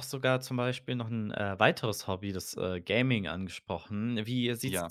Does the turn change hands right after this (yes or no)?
no